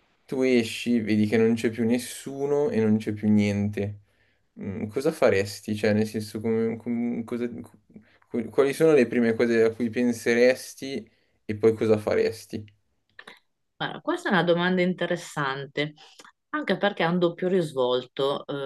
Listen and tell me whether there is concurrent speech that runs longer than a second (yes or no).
no